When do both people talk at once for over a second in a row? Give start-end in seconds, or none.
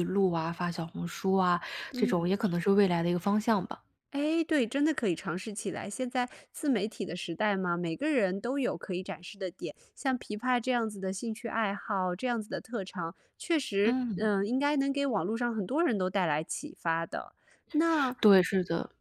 none